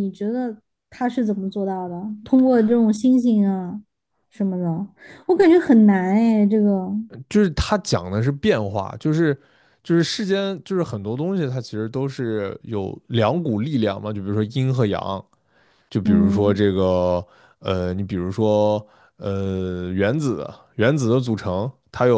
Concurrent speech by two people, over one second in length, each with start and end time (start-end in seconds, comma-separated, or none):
none